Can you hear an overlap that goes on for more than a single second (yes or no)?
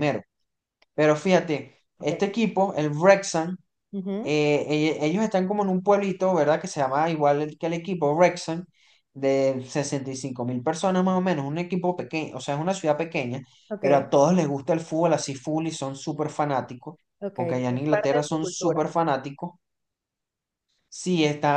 yes